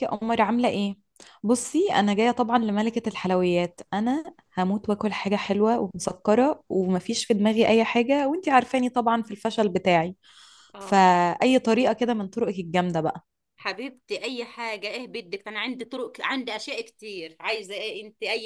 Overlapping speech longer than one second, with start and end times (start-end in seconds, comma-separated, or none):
none